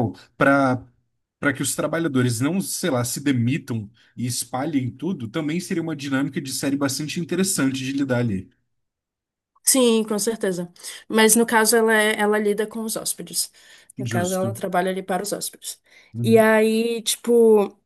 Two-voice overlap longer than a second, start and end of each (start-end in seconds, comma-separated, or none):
none